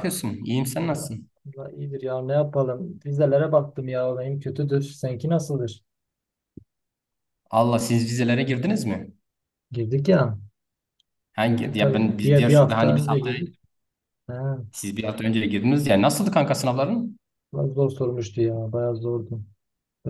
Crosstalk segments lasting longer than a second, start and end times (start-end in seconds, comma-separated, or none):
11.4-13.4